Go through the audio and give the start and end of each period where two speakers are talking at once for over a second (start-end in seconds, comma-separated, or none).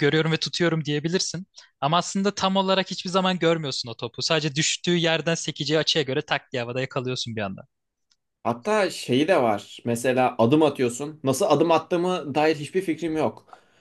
none